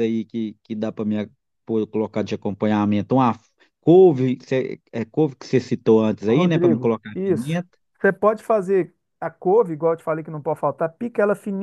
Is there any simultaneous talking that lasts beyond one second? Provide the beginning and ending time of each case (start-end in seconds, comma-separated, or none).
6.3-7.6